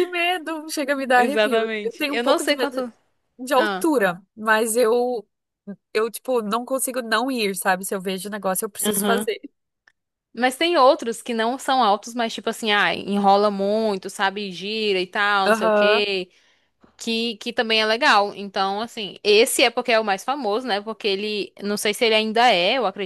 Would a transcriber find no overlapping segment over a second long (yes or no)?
no